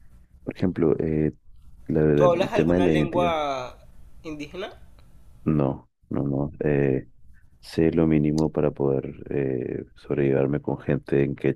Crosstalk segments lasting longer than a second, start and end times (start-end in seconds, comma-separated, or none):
2.1-3.4